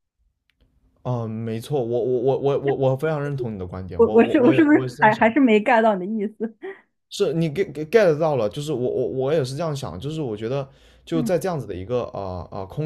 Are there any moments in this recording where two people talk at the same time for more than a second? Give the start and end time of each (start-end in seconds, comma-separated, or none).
4.0-5.2